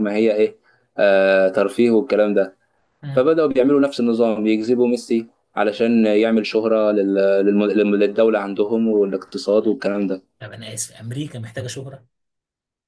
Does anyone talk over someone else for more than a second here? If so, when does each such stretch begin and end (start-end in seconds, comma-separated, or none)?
none